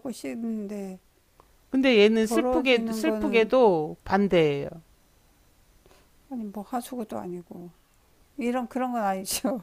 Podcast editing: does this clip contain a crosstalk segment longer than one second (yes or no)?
yes